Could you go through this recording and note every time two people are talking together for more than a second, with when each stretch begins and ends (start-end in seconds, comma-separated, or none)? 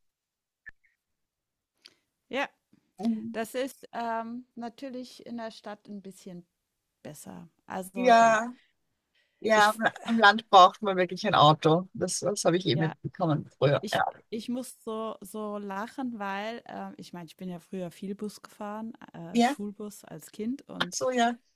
none